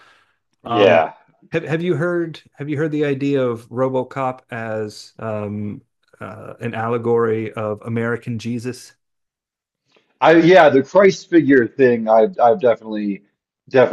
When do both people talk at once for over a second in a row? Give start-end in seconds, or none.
none